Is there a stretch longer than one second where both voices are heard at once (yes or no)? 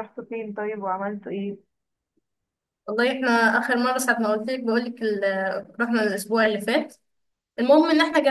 no